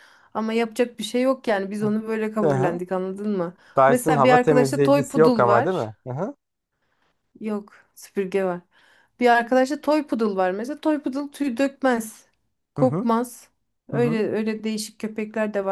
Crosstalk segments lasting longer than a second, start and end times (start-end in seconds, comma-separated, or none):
3.8-5.9